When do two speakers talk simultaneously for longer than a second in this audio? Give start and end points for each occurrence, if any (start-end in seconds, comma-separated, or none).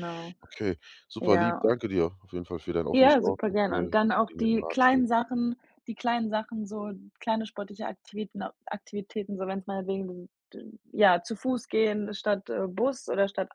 2.9-5.0